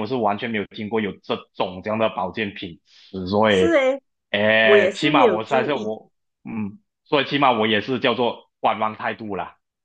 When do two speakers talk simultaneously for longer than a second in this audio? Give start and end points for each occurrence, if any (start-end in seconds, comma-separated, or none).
4.6-5.9